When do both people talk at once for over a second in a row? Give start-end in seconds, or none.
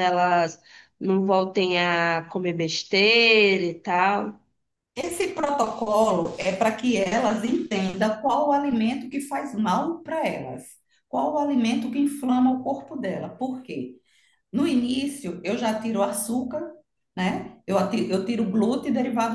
none